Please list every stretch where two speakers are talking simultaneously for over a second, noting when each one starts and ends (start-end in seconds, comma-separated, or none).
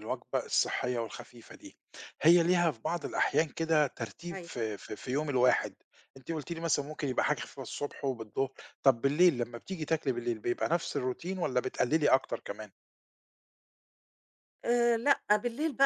none